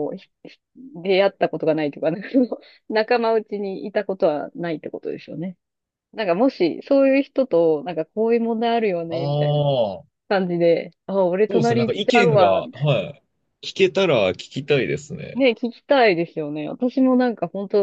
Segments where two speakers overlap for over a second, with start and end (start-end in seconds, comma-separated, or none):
11.5-12.9